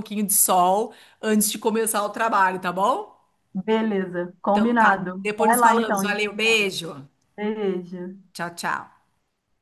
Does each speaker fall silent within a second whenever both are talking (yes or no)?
no